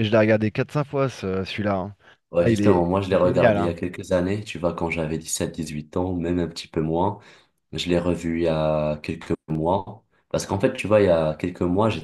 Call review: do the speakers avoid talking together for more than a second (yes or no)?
no